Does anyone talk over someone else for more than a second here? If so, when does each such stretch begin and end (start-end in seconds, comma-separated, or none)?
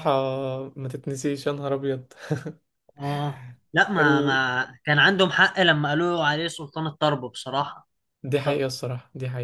none